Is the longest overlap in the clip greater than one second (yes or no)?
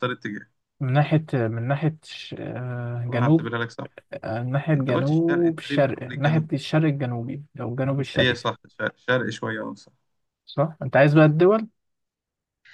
yes